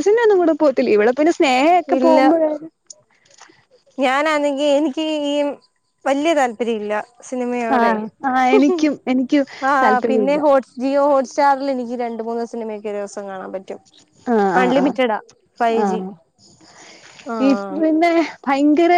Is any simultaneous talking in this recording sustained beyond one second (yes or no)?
no